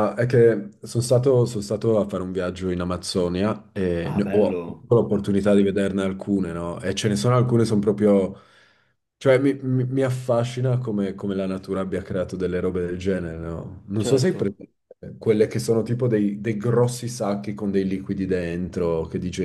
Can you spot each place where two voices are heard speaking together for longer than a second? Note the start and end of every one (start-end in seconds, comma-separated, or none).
4.0-5.4